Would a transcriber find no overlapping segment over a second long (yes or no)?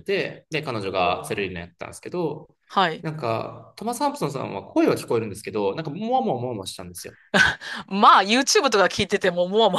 yes